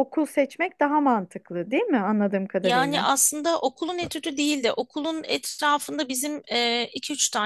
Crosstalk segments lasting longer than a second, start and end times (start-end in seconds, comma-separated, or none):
none